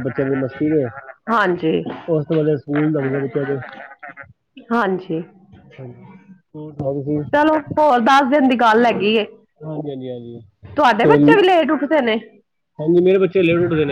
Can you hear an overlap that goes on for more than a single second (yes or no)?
no